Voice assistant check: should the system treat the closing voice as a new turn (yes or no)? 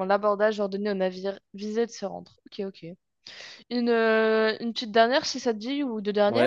yes